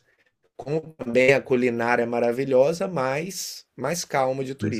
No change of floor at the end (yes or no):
no